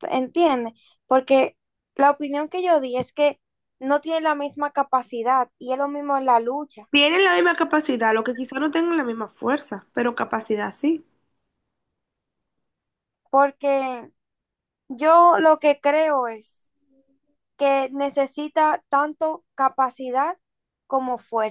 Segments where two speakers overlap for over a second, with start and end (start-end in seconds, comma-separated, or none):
none